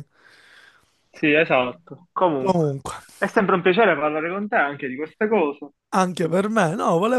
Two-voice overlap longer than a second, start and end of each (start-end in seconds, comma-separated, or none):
none